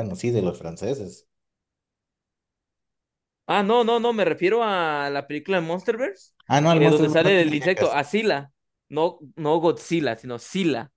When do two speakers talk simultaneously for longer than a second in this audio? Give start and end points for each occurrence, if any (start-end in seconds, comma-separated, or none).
6.7-8.0